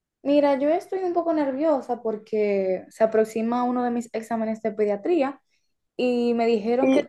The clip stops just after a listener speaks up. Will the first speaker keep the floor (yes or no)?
yes